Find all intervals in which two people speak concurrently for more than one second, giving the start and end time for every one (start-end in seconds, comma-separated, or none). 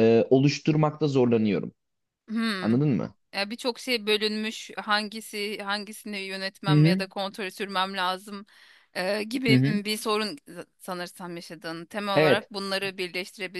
none